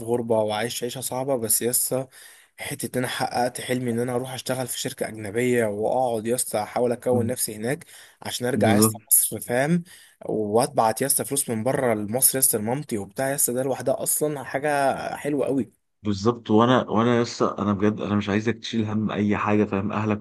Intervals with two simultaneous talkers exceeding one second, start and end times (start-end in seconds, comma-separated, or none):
none